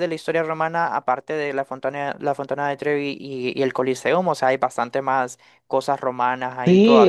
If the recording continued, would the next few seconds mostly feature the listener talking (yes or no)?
yes